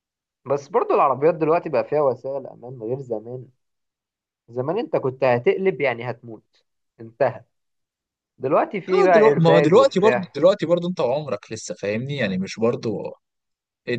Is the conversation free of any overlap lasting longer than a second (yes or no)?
no